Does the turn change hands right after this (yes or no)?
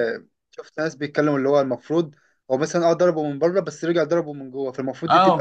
yes